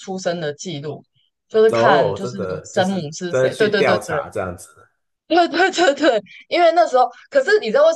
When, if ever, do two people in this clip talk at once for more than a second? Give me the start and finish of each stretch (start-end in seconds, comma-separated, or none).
1.7-4.2